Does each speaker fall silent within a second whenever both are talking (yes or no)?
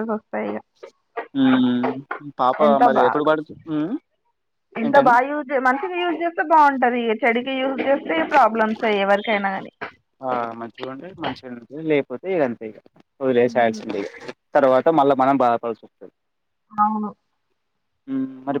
yes